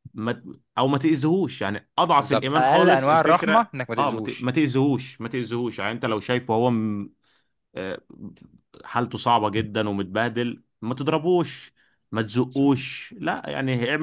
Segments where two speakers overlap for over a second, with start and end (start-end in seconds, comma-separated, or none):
2.2-4.5